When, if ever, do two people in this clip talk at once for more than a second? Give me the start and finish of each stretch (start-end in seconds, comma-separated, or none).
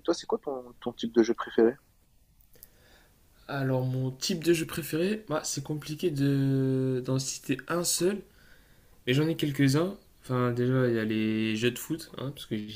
none